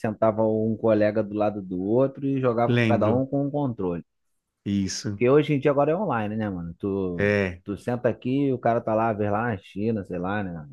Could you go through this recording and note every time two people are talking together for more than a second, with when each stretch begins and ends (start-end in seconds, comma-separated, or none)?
none